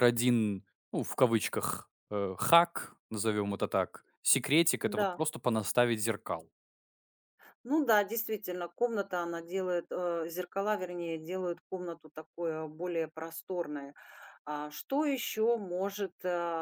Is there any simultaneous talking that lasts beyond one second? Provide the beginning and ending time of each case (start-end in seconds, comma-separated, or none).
none